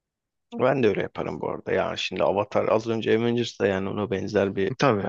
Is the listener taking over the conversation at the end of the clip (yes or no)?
no